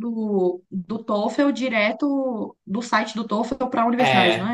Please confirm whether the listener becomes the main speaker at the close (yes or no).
yes